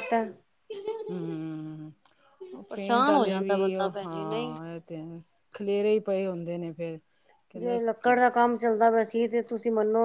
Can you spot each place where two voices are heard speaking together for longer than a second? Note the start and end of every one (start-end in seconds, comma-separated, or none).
2.7-4.6